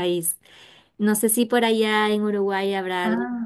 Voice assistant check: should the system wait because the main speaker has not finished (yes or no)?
yes